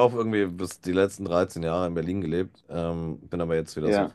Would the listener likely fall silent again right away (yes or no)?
yes